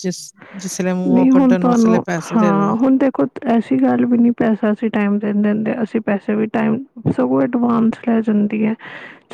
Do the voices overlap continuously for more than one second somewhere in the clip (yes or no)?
yes